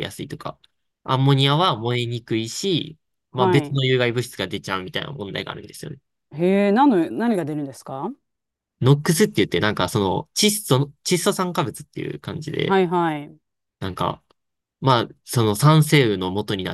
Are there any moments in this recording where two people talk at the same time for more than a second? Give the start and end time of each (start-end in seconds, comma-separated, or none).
none